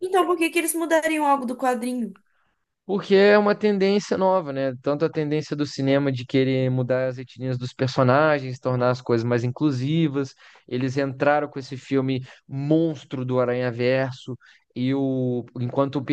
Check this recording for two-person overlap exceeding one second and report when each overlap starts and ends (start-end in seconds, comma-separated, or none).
none